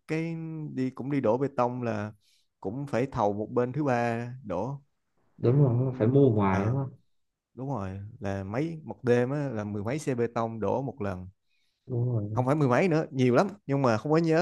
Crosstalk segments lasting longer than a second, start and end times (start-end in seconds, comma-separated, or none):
5.4-6.8